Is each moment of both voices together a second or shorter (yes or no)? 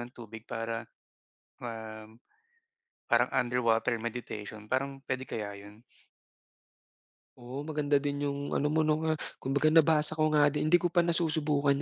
yes